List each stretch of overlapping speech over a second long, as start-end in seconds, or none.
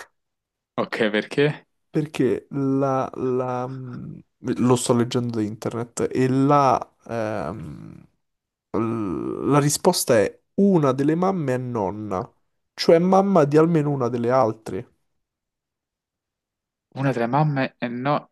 none